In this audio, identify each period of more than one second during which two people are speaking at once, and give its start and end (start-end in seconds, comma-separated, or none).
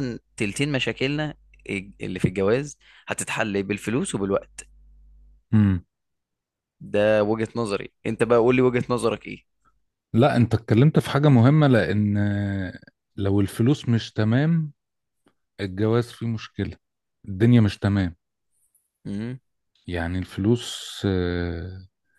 none